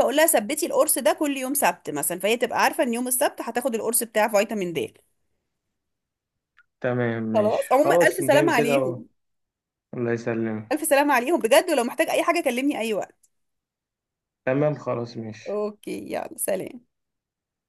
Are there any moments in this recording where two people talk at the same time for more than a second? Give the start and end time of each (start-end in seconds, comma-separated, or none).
7.3-9.0